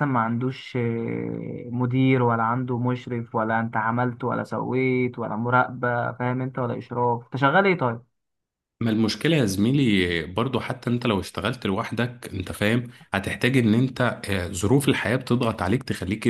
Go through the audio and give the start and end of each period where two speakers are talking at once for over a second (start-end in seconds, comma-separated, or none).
none